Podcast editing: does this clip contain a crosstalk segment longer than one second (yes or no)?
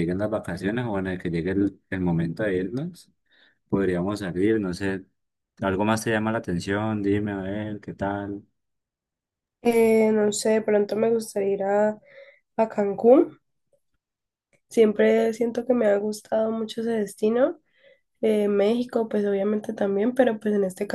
no